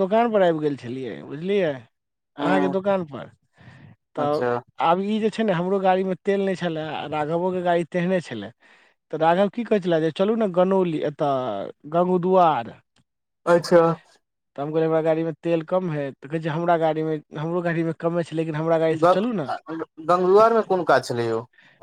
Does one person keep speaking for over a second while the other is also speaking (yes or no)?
no